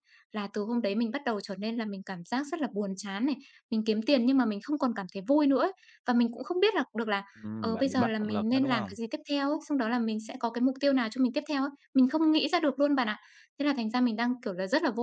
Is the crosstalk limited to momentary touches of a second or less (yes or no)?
no